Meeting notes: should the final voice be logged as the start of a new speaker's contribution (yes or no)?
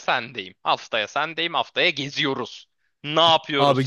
yes